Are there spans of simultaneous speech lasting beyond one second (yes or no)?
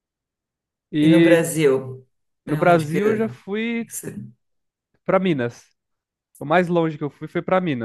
yes